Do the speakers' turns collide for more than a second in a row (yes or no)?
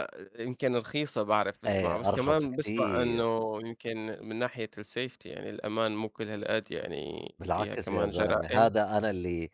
yes